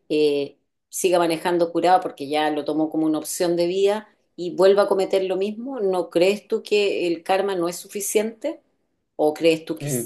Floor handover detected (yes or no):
yes